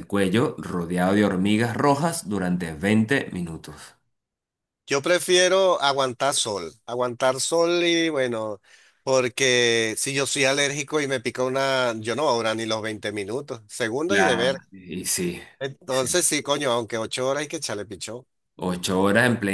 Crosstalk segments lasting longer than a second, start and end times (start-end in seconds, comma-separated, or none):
none